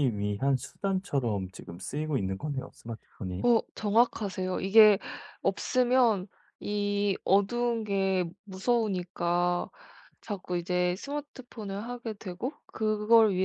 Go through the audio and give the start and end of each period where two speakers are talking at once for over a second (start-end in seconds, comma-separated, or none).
none